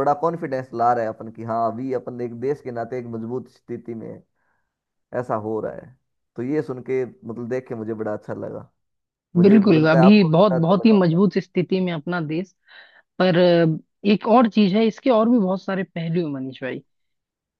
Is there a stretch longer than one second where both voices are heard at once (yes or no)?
yes